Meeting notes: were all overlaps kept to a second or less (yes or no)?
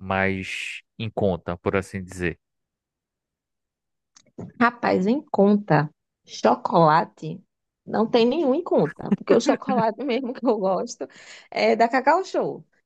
yes